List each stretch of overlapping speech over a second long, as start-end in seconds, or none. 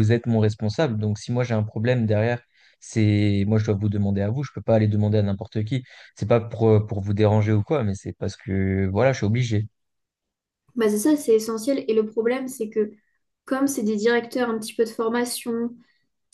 none